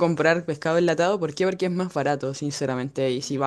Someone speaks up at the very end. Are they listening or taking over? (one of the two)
listening